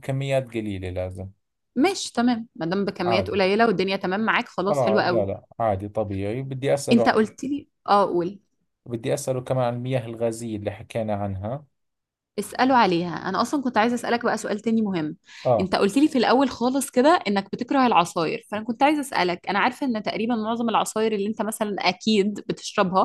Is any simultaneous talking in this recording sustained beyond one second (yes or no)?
no